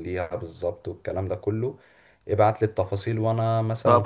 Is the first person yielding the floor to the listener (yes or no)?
yes